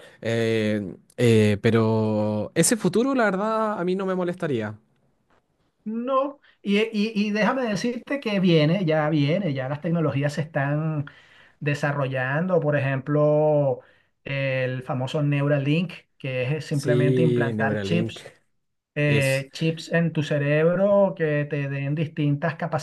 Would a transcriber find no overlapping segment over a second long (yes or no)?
no